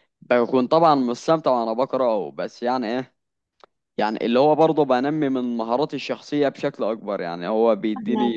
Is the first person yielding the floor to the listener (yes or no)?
no